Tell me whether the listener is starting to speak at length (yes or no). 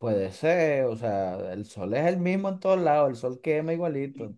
yes